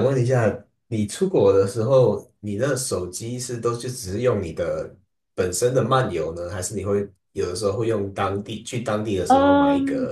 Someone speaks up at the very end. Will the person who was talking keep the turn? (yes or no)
no